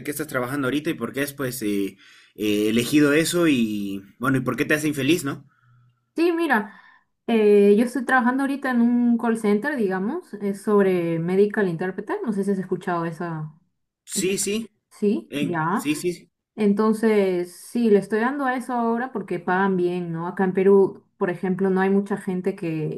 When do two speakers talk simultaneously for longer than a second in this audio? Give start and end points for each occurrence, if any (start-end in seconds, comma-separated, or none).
none